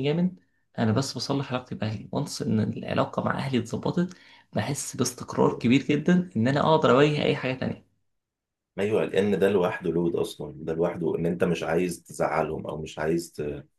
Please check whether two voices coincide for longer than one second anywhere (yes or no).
no